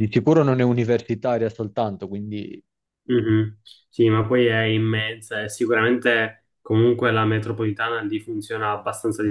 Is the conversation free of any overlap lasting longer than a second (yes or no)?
yes